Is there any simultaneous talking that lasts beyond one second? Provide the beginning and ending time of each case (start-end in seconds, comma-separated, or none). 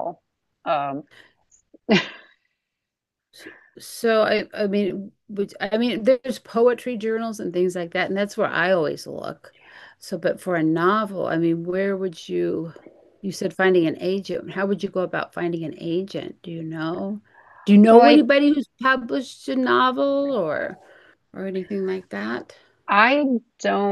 none